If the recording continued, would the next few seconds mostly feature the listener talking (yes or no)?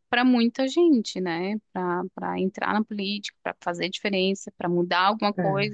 no